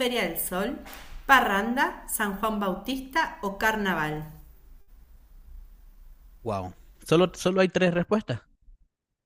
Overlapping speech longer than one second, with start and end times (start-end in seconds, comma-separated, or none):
none